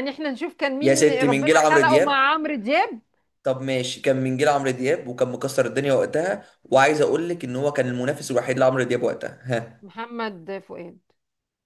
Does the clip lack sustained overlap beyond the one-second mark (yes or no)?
no